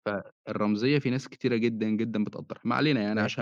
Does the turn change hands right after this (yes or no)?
yes